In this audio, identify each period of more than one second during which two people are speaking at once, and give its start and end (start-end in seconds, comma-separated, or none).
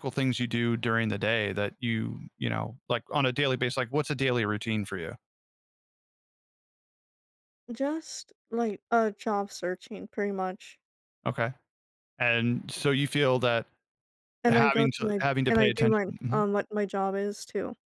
14.5-16.4